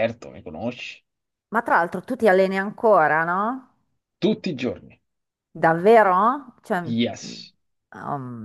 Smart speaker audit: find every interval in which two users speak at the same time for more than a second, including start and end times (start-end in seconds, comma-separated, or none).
none